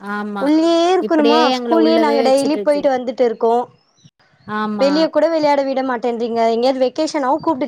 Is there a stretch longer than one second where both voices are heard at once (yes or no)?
yes